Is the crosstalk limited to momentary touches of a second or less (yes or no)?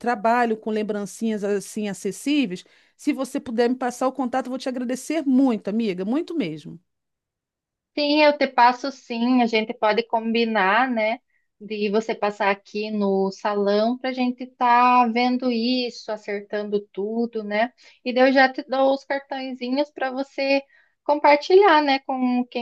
yes